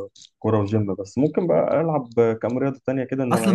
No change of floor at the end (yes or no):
no